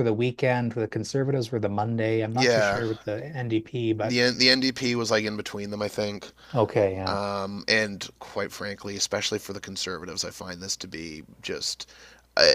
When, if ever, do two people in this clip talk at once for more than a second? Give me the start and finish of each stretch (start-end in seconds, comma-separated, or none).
none